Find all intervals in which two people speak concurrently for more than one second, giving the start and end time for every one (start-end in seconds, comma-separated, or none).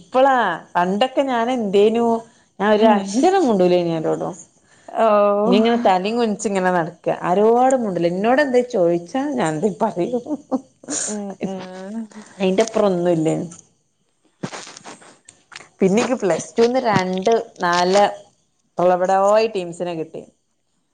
none